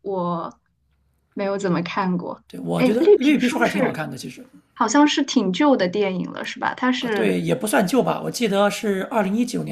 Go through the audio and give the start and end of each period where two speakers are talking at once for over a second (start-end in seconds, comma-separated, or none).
2.5-4.0